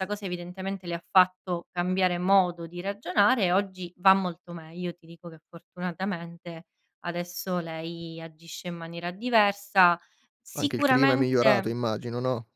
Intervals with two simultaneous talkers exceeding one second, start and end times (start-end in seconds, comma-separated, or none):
10.5-11.8